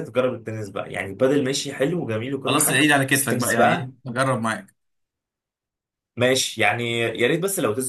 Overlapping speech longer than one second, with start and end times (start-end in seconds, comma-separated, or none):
2.5-3.9